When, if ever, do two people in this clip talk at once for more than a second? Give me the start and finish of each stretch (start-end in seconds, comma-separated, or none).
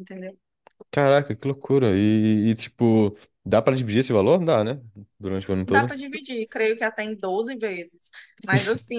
none